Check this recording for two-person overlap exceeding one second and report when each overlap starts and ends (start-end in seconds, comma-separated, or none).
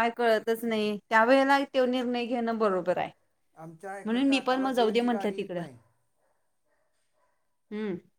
4.0-5.6